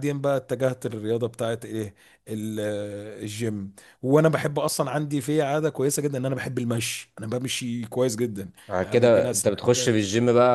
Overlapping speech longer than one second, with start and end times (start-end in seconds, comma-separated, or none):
8.7-10.0